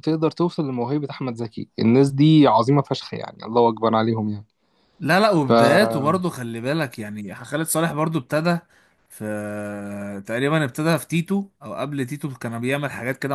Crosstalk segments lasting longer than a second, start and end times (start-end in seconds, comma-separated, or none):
none